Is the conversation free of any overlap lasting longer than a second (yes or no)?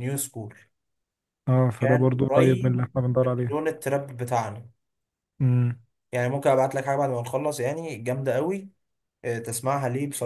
no